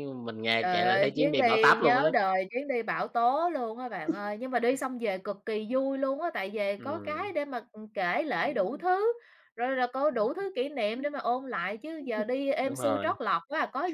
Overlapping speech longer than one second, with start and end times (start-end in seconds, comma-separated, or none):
0.6-2.1